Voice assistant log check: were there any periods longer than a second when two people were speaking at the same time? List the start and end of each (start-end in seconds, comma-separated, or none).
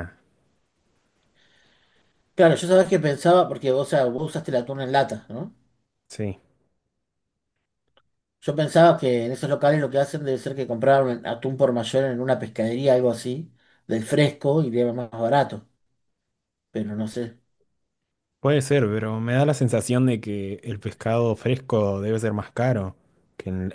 none